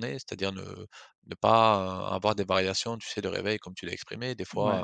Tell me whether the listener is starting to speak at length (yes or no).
no